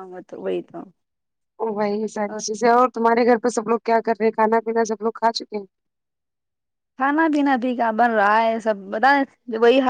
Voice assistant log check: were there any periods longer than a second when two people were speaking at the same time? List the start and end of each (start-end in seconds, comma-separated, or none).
none